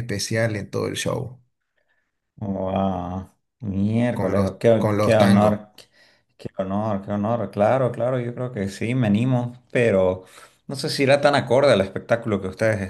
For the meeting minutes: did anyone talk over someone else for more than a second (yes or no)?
yes